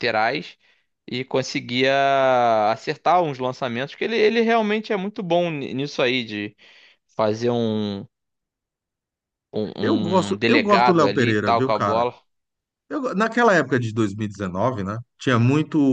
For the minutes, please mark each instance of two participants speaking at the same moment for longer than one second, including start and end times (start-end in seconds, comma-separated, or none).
10.3-12.1